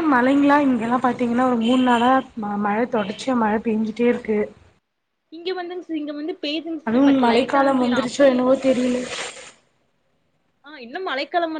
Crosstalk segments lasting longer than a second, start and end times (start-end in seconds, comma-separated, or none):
6.9-8.5